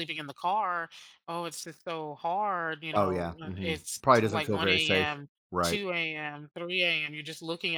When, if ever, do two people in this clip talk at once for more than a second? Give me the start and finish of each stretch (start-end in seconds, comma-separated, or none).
2.9-5.8